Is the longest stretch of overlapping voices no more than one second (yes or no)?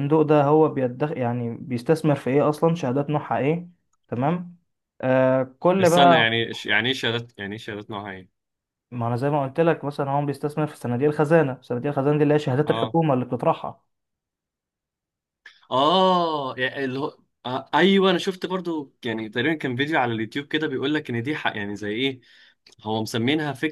yes